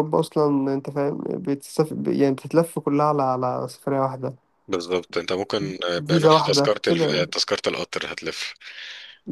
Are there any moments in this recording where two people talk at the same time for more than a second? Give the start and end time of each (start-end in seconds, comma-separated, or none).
6.1-7.3